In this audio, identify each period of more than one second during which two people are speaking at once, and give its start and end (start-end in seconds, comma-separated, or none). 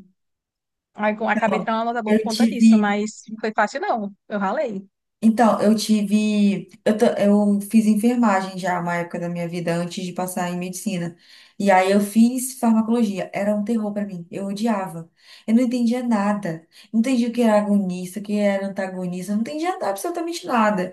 1.2-3.0